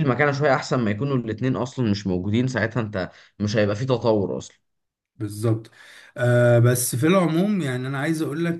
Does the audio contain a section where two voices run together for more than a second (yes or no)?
no